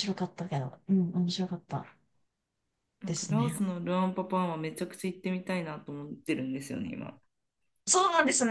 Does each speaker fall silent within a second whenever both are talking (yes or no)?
yes